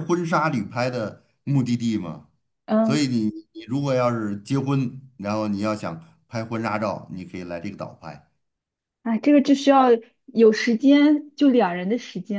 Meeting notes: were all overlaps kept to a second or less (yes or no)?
yes